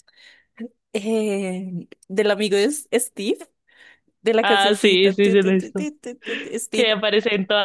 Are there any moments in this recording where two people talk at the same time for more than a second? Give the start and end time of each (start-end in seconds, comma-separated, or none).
4.4-5.9